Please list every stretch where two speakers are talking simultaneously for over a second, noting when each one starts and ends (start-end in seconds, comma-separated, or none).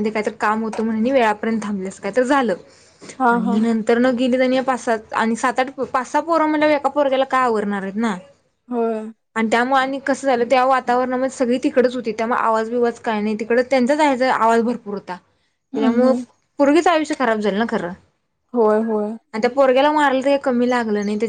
none